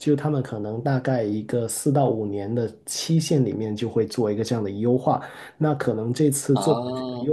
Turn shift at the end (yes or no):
no